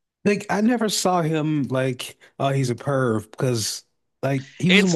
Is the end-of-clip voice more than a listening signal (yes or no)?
no